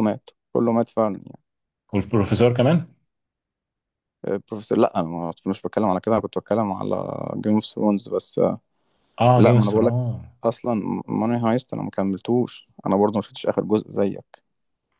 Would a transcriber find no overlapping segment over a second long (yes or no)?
yes